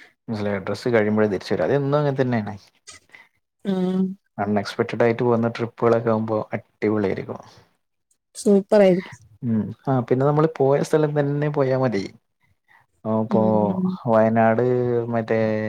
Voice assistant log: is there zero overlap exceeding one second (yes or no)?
yes